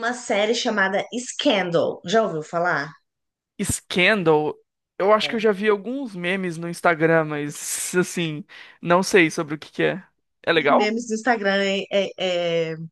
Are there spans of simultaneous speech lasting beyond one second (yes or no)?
no